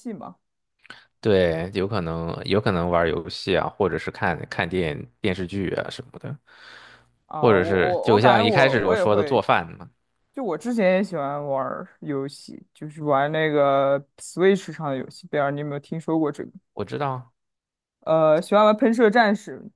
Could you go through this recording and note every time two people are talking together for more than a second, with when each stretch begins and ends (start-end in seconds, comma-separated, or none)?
7.4-9.4